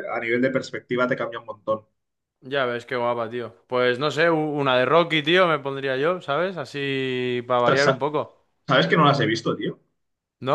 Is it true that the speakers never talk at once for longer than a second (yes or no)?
yes